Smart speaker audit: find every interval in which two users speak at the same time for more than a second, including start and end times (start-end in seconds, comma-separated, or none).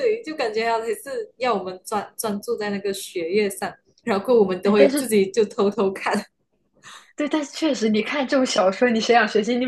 none